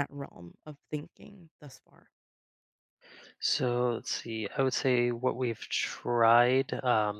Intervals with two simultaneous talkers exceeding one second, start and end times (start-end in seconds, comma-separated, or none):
none